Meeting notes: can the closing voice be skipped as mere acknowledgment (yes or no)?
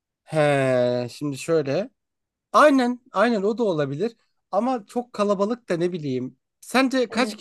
yes